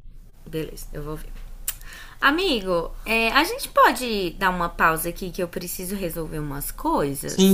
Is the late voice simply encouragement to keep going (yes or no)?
no